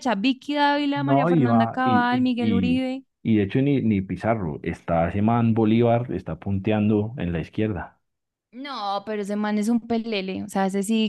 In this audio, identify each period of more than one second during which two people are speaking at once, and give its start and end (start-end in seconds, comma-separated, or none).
0.9-2.9